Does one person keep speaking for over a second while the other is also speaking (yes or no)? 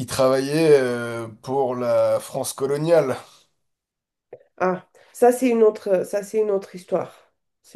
no